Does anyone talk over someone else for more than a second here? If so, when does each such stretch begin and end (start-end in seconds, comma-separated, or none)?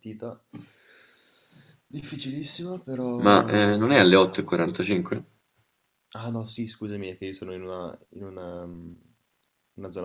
3.2-4.6